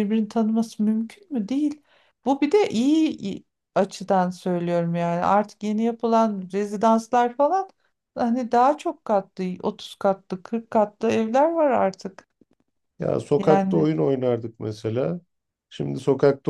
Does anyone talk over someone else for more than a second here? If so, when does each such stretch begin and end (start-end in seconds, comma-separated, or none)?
none